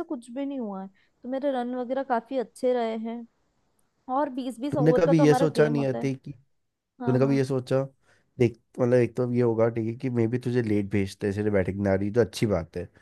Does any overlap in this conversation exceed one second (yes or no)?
yes